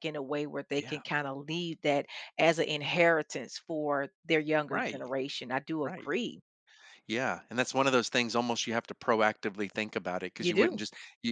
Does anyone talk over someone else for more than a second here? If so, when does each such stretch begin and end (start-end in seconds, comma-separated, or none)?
none